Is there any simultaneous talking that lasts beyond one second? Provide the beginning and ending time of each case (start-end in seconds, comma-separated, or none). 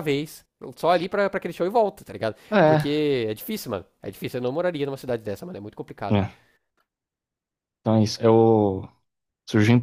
none